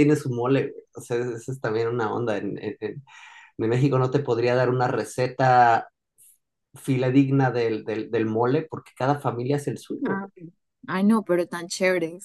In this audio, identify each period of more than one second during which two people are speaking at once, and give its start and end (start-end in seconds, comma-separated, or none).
none